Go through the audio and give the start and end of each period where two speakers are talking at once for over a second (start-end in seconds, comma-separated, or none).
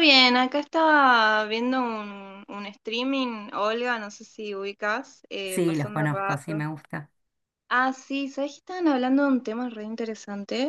5.5-6.7